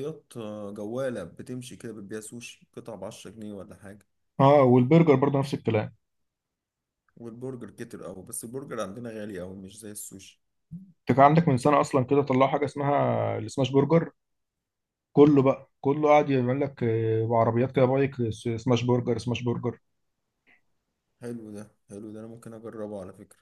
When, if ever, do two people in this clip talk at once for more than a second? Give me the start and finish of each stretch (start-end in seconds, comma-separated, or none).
none